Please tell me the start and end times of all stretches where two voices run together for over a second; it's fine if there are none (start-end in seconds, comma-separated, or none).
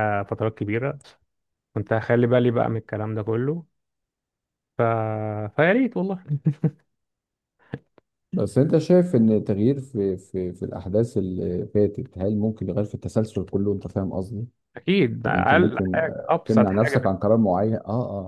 15.3-17.1